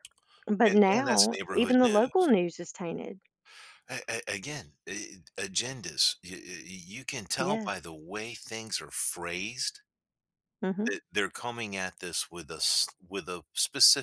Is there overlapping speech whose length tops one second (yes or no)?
yes